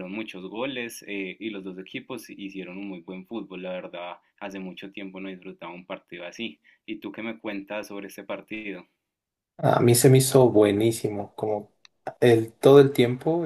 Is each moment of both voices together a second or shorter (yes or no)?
yes